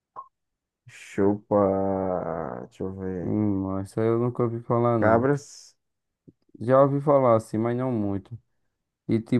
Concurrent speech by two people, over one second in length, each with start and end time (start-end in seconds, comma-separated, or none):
none